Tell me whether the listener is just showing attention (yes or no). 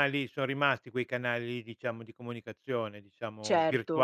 no